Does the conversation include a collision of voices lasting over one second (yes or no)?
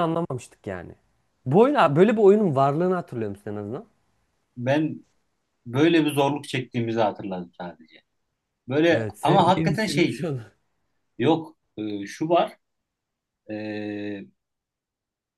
yes